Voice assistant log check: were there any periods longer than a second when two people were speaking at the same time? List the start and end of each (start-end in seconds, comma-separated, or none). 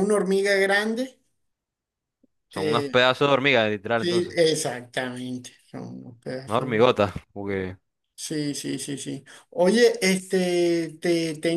none